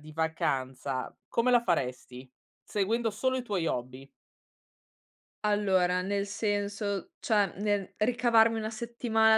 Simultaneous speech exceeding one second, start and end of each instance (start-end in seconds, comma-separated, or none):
none